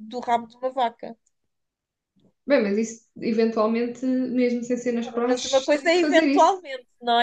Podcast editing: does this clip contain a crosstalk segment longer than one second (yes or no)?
yes